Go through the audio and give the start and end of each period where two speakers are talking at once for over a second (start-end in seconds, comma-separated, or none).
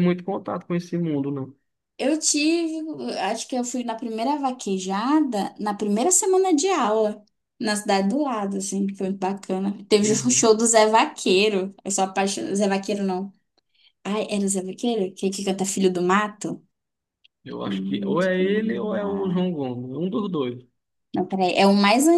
17.6-19.5